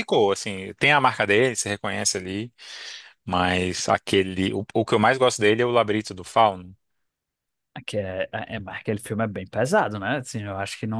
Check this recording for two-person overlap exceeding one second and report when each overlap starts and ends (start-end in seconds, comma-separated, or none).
none